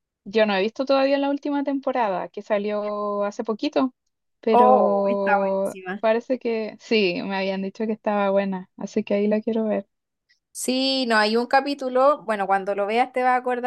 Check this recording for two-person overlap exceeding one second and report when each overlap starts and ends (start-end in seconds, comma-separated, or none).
4.5-6.0